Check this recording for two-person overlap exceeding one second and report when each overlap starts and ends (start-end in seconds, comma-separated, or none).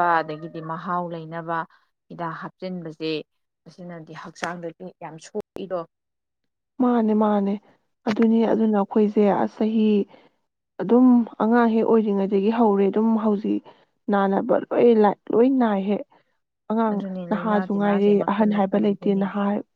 16.9-19.2